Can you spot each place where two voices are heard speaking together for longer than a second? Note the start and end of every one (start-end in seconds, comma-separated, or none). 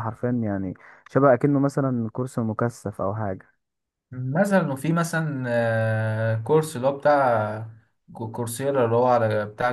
none